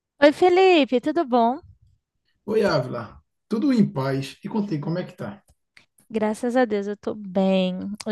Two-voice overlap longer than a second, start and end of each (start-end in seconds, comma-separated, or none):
none